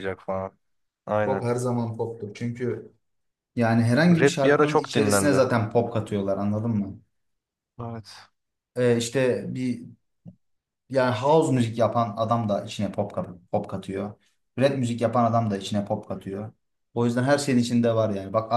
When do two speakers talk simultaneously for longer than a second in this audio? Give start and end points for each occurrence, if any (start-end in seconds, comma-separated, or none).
4.1-5.4